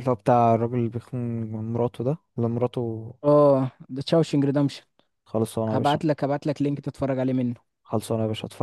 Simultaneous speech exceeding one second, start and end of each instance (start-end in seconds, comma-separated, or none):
none